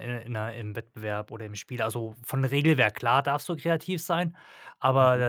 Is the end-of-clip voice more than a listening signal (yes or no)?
no